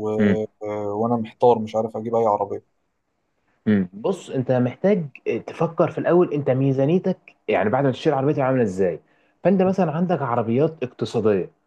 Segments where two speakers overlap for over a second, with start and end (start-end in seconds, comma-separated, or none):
none